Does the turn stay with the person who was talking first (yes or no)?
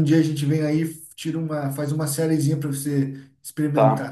no